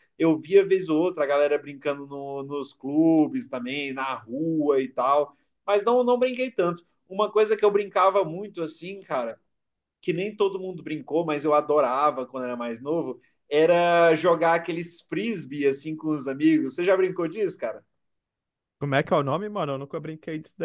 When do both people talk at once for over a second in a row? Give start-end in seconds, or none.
none